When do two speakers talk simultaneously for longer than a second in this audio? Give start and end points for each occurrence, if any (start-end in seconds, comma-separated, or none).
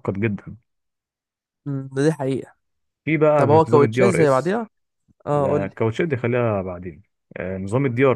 3.4-4.6